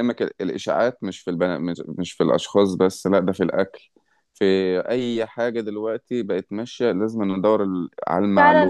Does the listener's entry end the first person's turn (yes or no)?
yes